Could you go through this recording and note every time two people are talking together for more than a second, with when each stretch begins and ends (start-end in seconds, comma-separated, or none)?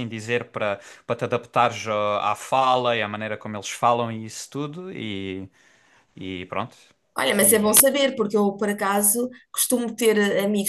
none